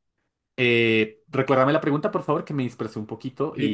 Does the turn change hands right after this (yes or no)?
yes